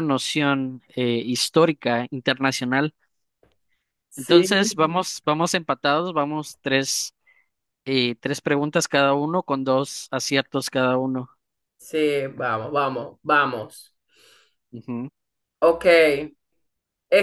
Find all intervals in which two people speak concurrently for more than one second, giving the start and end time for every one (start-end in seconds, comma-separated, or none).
none